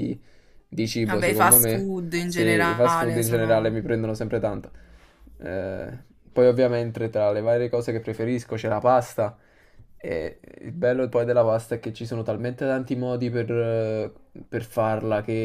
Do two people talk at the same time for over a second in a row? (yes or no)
yes